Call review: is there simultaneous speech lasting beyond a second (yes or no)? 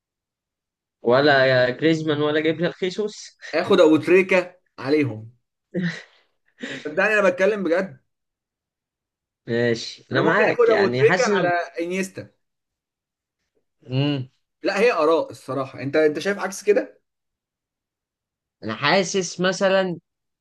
yes